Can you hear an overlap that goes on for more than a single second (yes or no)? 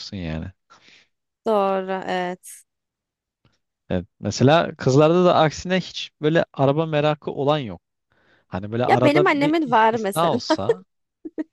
yes